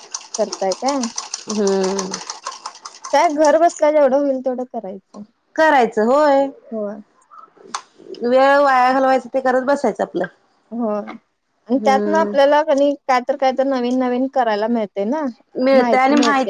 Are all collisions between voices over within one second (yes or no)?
yes